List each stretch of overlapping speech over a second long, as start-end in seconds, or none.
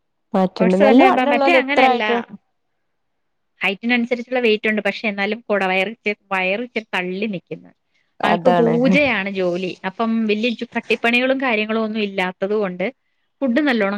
0.6-2.1